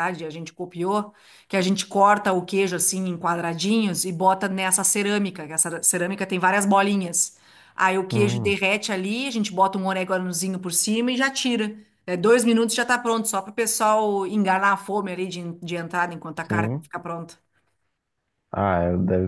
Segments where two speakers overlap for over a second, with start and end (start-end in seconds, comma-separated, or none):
none